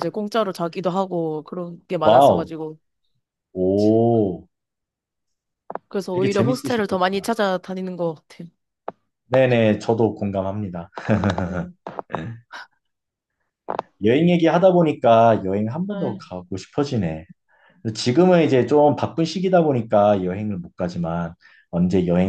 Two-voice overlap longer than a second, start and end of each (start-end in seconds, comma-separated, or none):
6.1-7.3